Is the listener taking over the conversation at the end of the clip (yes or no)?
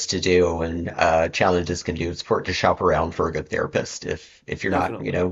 no